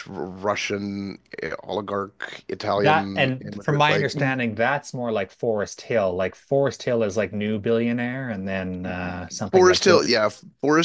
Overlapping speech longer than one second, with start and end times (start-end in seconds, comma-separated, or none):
2.8-4.4